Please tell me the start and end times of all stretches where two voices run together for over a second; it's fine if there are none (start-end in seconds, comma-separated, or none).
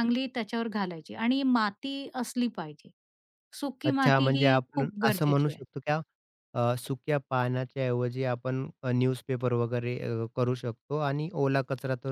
3.8-5.6